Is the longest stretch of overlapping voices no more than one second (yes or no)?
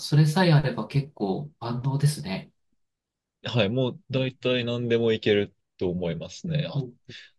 yes